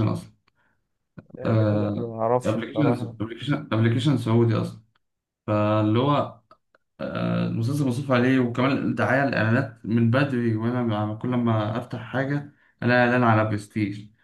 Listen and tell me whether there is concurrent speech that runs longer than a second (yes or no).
yes